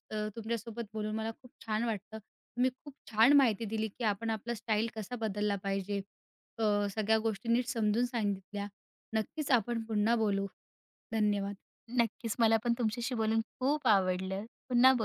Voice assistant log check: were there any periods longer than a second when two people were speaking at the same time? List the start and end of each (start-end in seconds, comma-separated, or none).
none